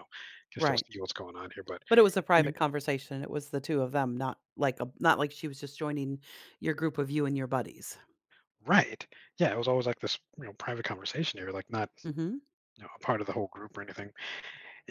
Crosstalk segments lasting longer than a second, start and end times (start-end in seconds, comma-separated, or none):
none